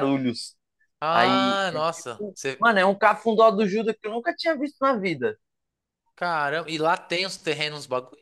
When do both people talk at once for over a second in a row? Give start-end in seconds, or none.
1.1-2.7